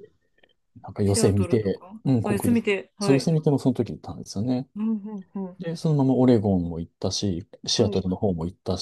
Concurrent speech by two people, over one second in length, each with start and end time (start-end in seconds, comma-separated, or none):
1.0-3.3